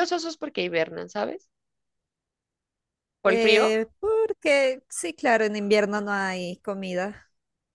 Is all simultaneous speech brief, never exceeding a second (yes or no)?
yes